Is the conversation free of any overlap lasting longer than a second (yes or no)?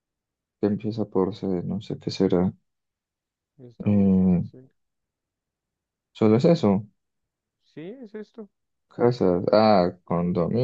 yes